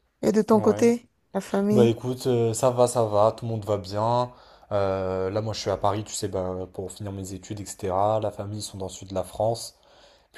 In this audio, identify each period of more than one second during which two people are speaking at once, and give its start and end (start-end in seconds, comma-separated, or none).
none